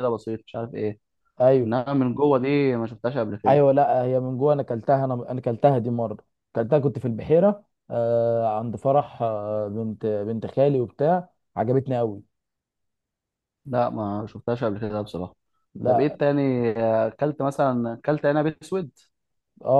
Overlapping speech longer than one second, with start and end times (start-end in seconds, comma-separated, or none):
none